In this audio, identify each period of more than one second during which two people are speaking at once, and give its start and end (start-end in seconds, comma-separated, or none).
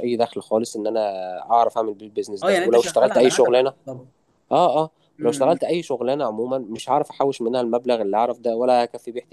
2.4-3.7